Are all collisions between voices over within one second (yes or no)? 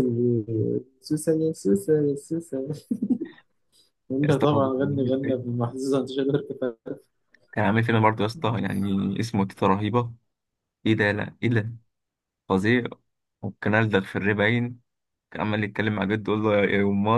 no